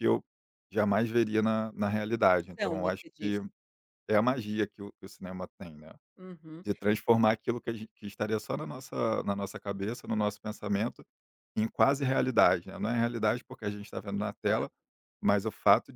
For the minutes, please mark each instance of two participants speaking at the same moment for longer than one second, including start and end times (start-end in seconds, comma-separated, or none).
2.2-3.4